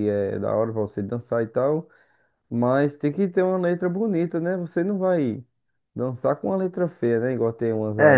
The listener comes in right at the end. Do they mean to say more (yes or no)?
yes